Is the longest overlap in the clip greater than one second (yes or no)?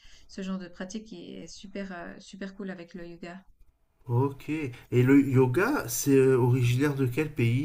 no